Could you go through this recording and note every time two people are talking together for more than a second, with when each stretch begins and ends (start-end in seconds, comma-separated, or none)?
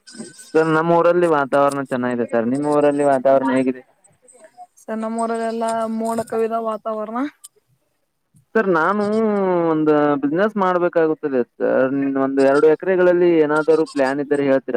none